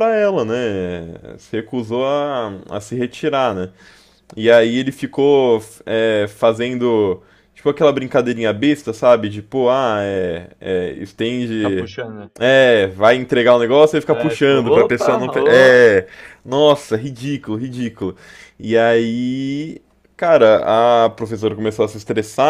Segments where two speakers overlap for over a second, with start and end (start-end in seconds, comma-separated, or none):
14.1-15.8